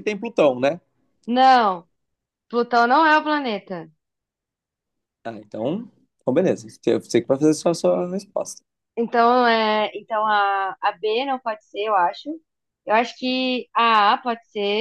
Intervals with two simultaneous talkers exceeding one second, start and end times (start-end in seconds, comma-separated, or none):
none